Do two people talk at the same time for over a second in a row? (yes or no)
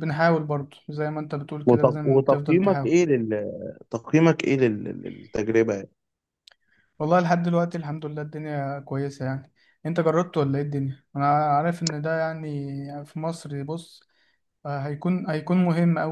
yes